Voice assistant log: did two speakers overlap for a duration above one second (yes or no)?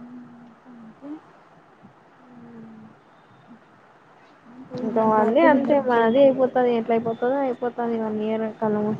yes